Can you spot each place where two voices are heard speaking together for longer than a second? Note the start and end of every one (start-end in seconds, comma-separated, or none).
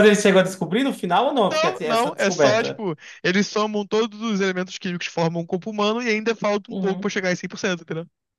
1.5-2.8